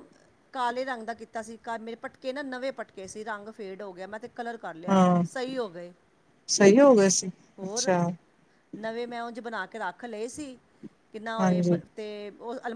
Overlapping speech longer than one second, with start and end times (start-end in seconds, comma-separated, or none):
none